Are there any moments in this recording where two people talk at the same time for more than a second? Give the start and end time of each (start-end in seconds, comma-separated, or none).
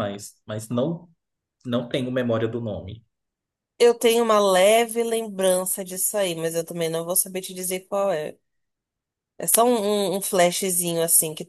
none